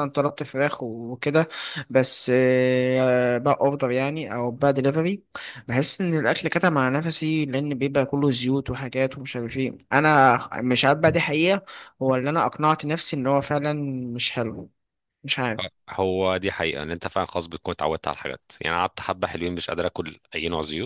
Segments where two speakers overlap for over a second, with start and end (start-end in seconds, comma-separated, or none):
none